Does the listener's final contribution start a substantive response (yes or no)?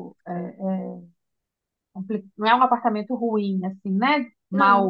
yes